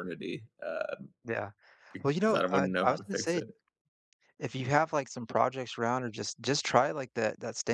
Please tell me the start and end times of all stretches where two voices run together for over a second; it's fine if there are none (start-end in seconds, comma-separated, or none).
2.0-3.4